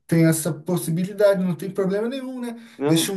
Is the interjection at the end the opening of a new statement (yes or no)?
no